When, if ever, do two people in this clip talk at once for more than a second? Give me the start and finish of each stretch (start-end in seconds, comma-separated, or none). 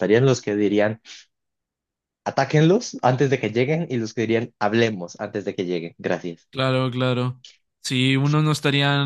none